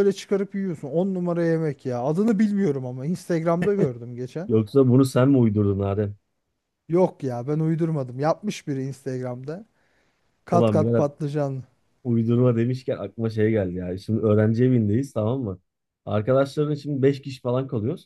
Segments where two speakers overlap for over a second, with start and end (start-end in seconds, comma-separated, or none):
none